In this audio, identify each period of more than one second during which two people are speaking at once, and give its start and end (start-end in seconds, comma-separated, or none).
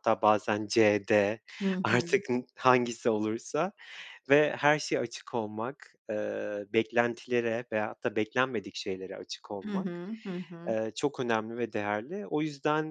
none